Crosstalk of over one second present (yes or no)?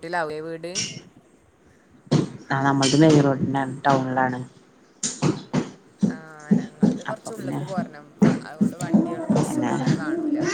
no